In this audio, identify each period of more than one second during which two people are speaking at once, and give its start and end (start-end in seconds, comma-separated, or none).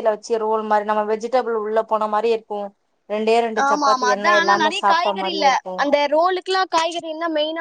3.7-5.5